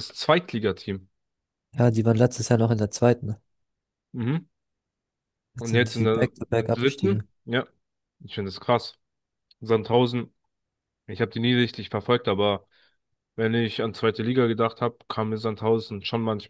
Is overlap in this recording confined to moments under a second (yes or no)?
no